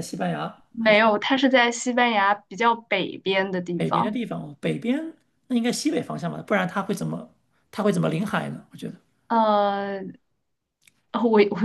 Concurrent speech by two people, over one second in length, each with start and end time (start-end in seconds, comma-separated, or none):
none